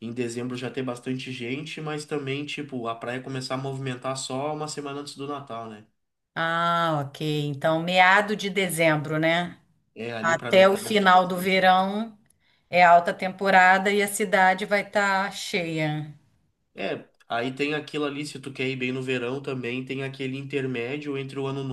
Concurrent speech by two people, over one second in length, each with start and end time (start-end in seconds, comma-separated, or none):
10.2-11.5